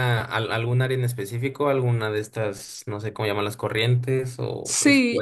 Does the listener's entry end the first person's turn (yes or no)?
yes